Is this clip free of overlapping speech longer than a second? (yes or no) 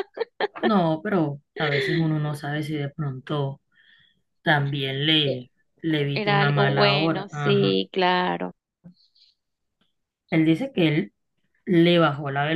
no